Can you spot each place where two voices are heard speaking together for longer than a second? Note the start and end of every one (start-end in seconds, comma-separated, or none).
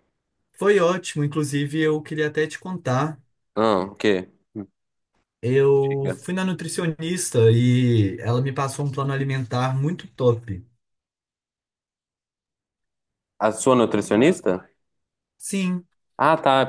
none